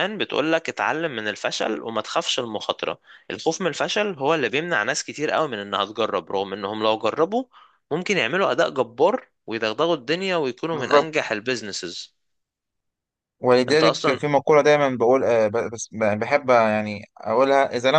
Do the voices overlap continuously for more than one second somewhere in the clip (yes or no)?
no